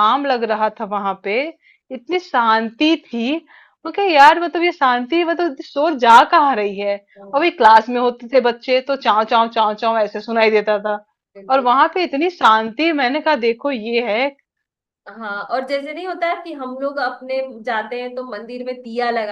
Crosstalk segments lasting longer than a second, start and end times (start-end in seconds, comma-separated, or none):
none